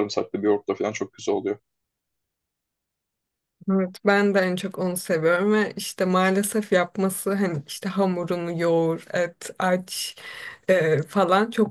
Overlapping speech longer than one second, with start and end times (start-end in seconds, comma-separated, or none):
none